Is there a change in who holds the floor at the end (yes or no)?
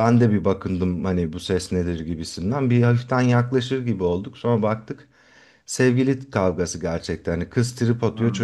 no